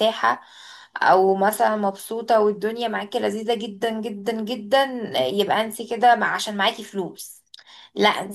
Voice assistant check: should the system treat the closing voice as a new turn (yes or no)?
no